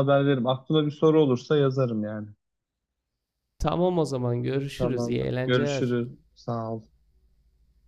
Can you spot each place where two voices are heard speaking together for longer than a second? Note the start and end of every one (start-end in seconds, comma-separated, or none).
4.8-6.0